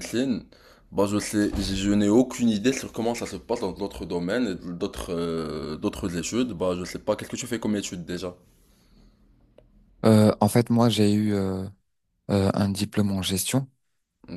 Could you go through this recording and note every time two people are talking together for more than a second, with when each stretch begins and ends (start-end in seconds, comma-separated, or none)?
none